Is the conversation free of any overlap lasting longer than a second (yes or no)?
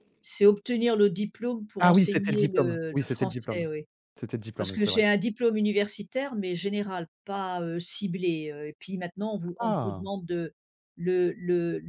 no